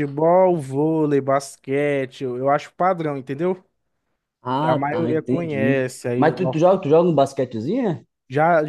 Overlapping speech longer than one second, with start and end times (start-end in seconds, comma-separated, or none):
4.6-6.2